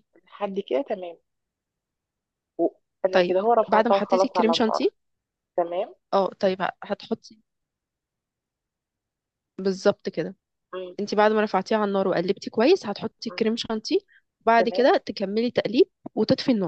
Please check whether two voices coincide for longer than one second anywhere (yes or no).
yes